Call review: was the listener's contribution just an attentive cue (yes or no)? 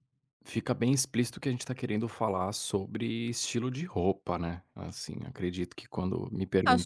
no